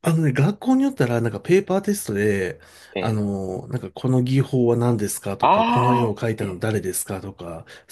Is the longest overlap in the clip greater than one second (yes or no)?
yes